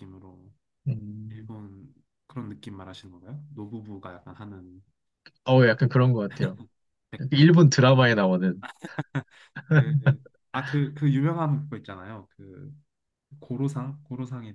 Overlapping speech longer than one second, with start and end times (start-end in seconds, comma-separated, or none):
none